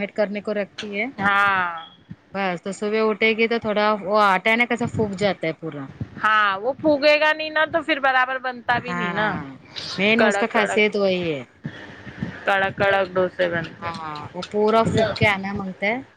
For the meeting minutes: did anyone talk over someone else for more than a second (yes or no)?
yes